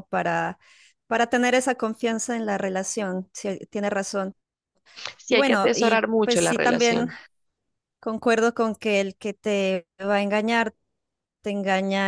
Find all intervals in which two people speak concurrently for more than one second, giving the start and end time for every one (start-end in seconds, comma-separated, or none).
5.3-7.1